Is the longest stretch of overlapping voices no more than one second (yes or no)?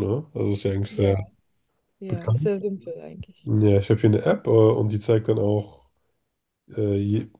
yes